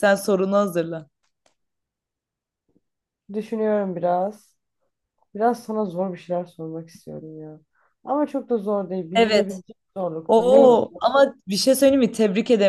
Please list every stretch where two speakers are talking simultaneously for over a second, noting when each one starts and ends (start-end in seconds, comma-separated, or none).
none